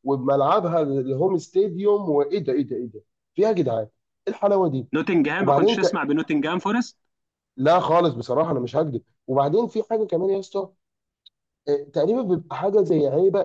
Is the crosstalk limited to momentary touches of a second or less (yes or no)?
yes